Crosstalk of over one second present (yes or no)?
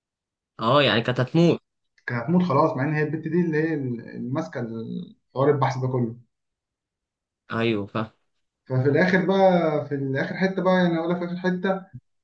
no